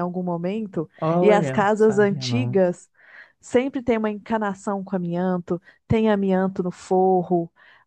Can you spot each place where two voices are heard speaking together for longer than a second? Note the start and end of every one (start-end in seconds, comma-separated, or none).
1.0-2.6